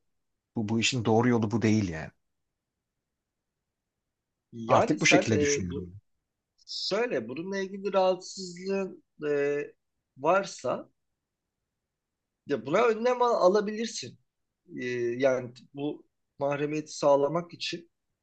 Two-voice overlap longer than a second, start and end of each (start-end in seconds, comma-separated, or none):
4.7-5.9